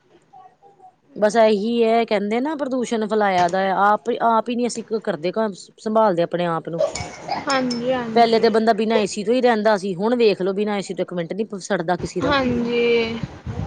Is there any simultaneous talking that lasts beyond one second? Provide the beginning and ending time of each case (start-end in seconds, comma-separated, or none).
none